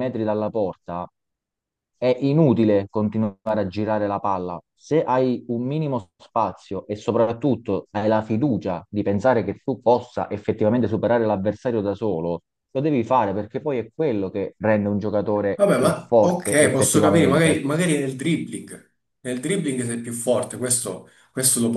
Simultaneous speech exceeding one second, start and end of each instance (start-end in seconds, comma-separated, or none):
15.6-17.6